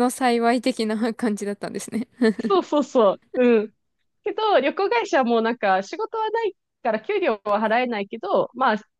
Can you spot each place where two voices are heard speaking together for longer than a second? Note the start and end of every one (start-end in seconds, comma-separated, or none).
none